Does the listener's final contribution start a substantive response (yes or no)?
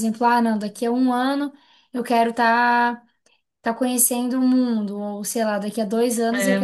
no